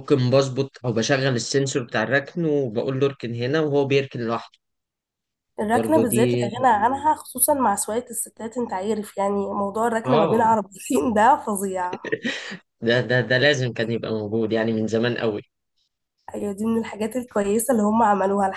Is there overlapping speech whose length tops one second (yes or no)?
no